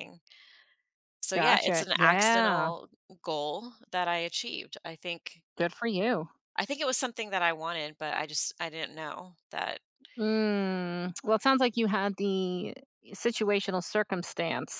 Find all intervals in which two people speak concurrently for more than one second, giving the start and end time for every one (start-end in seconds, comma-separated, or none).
1.3-2.7